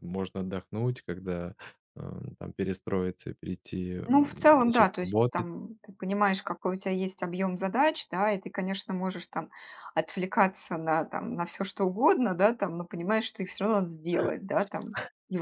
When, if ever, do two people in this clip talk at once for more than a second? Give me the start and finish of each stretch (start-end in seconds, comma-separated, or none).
4.1-5.5